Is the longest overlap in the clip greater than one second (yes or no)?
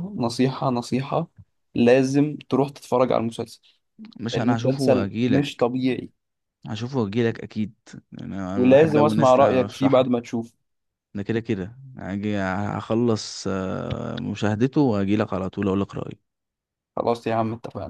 yes